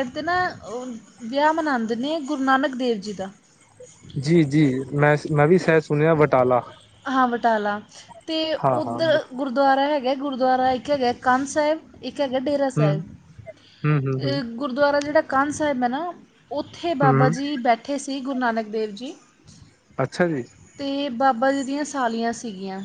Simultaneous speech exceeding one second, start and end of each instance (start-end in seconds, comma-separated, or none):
none